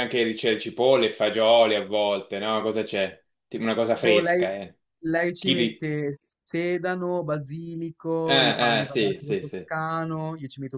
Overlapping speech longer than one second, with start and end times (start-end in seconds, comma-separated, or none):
8.2-9.7